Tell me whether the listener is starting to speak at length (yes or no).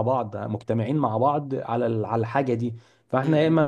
no